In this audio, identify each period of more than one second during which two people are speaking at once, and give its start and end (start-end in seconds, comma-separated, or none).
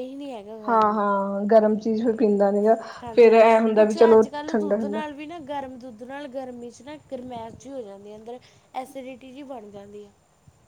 none